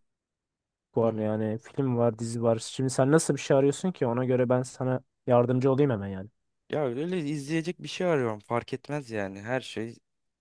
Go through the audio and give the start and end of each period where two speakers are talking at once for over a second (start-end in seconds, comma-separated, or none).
none